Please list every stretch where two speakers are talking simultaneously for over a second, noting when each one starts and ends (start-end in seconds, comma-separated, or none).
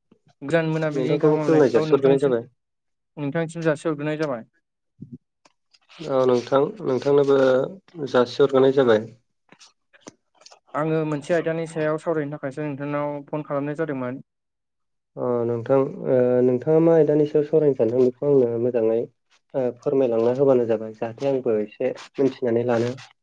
1.0-2.4